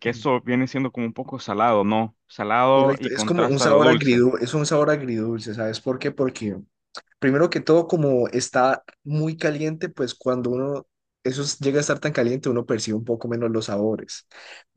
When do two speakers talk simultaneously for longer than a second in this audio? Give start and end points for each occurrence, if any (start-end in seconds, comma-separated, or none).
2.7-4.2